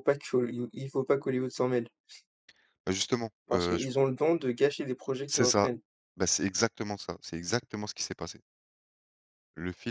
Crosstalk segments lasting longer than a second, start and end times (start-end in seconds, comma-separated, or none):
none